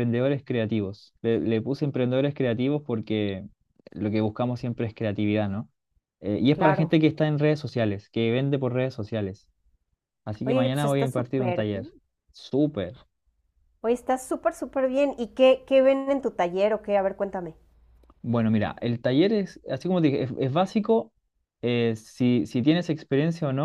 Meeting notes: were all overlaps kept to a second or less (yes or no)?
no